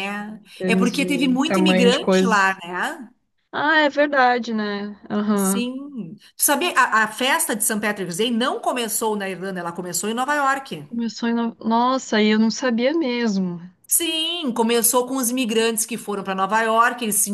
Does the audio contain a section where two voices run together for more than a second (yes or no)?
yes